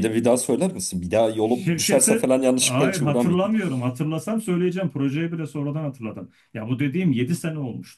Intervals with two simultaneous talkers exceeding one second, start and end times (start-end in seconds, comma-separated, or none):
1.4-3.5